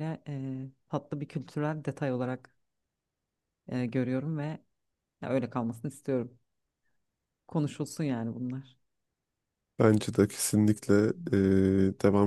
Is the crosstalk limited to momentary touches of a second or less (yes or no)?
yes